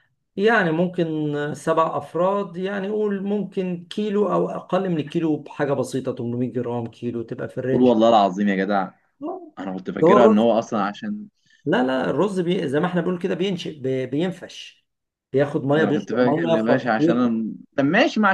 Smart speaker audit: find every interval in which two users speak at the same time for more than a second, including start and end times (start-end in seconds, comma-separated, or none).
15.7-17.4